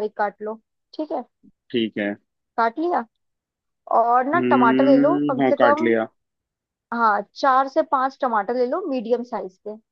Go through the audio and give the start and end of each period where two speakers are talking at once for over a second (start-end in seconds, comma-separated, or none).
4.3-5.8